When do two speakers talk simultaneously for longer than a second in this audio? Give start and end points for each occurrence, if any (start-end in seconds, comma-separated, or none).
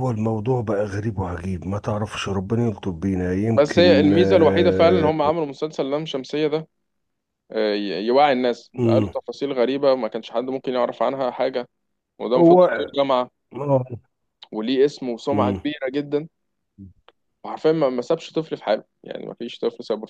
3.5-5.1